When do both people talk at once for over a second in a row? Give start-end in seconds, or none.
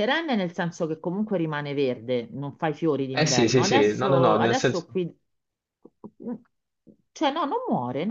3.1-4.9